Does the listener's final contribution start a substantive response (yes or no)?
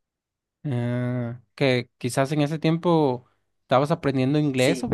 yes